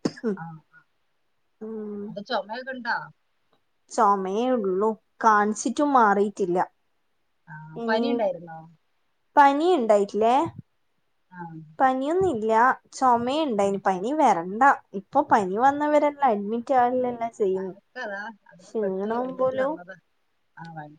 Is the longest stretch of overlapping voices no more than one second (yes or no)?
yes